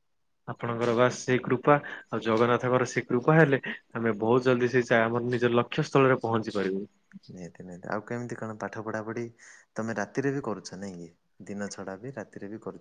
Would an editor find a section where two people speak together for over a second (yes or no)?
no